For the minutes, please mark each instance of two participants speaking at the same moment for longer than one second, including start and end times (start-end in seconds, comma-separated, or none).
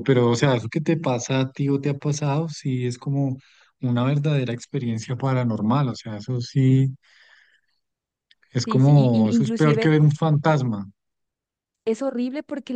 8.7-9.9